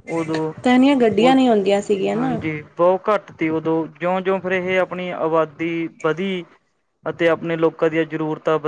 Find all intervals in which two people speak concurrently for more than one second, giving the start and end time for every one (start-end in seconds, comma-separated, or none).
none